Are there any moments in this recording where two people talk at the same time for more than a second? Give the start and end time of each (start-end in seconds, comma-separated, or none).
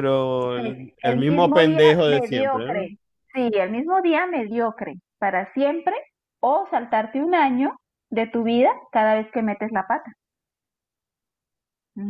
0.5-2.9